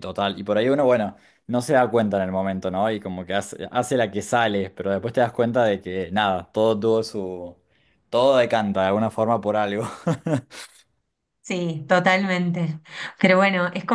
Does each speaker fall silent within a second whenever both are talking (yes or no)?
yes